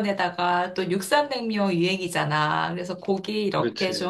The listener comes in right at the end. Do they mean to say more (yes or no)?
no